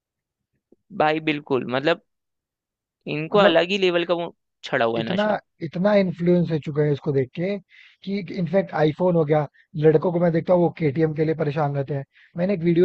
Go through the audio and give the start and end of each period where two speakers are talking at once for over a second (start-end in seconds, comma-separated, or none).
none